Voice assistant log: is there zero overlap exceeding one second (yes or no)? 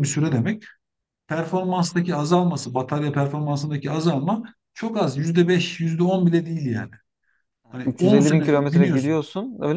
no